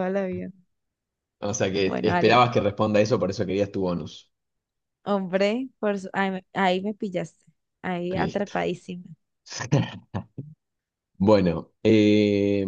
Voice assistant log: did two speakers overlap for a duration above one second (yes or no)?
no